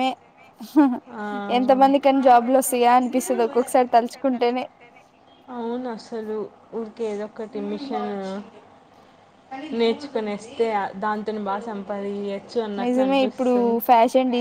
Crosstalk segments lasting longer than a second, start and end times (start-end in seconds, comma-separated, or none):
none